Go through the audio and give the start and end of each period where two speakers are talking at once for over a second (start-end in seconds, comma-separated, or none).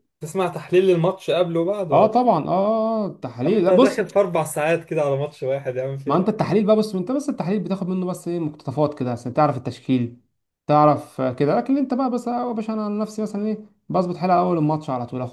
none